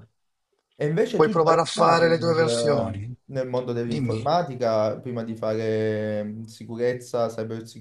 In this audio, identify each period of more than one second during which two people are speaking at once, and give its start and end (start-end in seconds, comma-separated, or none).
1.1-3.1